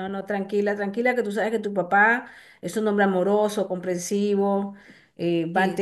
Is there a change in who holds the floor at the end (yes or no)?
no